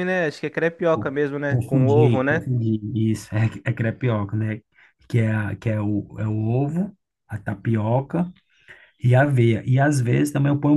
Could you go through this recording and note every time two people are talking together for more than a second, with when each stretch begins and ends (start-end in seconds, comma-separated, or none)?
0.9-2.5